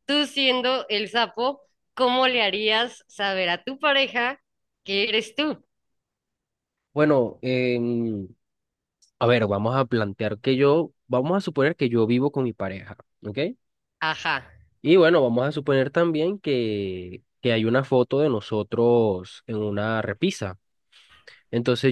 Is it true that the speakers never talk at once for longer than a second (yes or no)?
yes